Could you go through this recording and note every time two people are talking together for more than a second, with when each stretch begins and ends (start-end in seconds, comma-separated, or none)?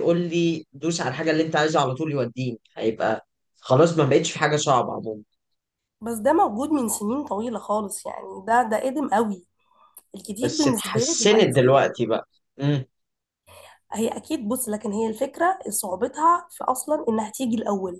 10.4-11.7